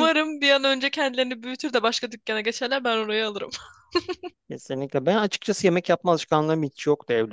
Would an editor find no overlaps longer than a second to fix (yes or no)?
yes